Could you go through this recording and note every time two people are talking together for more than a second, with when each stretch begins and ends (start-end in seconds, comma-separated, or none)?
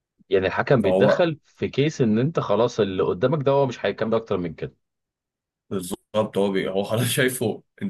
none